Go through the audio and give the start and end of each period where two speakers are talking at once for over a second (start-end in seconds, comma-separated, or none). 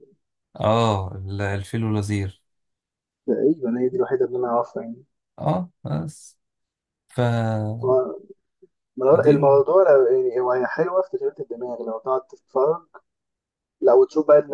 none